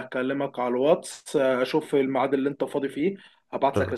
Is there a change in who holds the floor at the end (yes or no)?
no